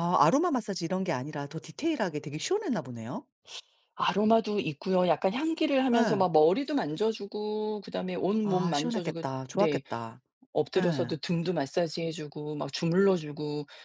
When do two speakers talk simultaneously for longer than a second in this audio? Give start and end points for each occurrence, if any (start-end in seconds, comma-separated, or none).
8.4-9.8